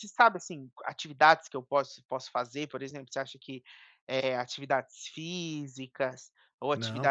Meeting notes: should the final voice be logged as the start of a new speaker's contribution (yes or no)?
no